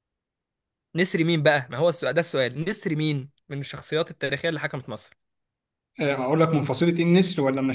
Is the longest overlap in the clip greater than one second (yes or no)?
no